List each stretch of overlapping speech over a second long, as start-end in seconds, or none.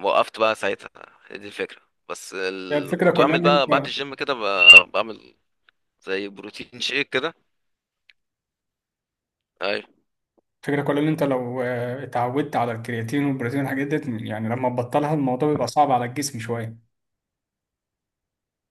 2.7-3.9